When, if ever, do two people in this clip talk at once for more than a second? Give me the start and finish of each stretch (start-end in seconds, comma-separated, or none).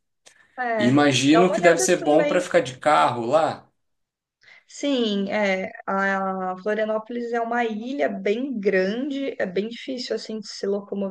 0.8-2.5